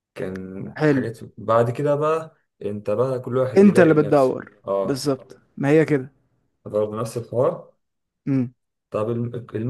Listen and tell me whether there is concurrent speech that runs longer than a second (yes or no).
yes